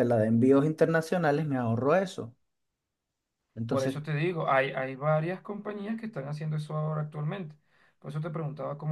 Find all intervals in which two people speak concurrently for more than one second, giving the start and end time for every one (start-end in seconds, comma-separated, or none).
none